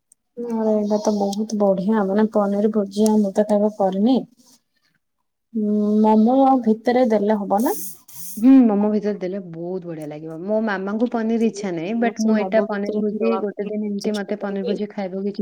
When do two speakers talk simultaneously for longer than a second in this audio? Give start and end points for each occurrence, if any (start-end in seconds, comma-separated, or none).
12.2-14.7